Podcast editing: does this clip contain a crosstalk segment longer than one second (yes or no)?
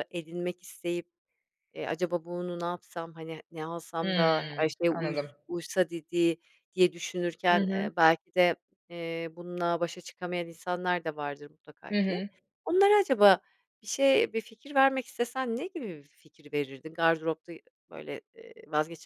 yes